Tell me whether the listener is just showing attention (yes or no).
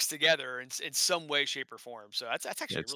yes